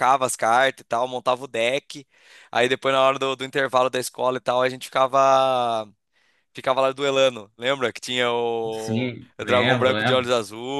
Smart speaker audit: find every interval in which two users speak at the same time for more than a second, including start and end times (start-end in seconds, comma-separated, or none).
8.7-10.3